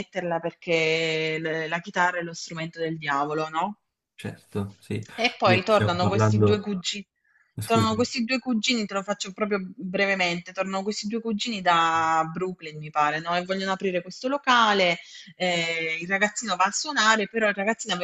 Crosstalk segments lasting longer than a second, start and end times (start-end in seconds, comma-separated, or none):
5.4-6.7